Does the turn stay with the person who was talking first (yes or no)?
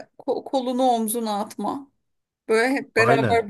yes